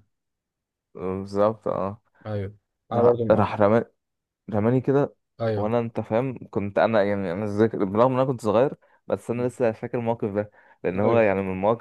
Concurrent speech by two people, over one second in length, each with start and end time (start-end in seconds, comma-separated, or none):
none